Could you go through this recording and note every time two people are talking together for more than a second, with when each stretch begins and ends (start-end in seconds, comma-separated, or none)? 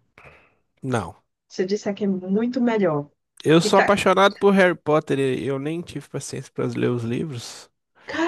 none